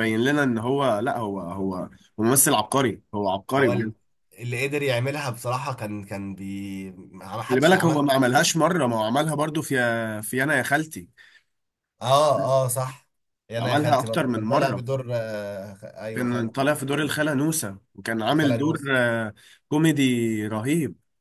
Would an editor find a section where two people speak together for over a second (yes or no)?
yes